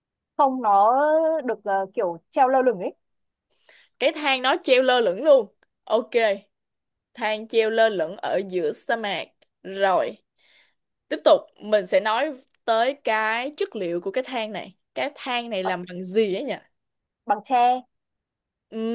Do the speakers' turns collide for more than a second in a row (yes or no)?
no